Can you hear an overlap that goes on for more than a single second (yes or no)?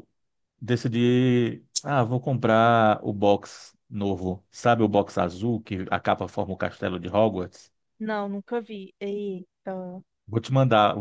no